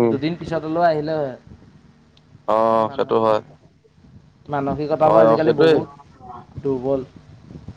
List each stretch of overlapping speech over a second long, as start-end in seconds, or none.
5.1-6.4